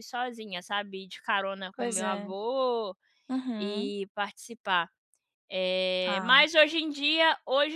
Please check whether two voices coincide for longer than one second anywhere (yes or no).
no